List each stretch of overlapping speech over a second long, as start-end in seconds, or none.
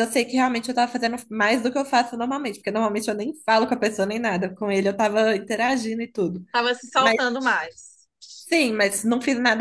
none